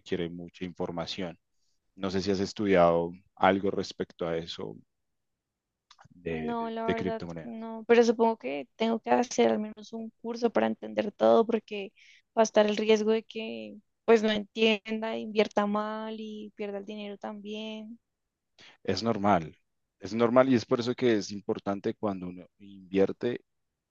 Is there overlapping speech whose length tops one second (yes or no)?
yes